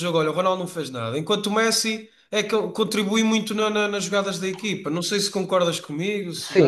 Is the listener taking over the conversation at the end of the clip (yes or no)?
yes